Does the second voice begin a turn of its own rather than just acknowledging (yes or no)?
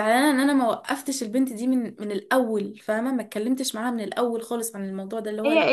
yes